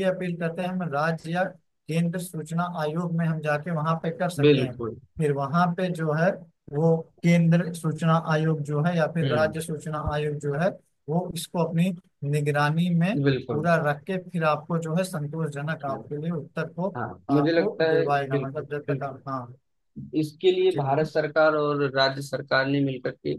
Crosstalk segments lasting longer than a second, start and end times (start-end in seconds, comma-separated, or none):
17.0-19.2